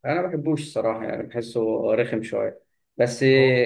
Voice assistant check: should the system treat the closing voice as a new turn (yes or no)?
no